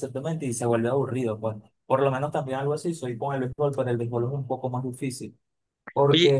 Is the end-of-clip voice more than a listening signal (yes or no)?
yes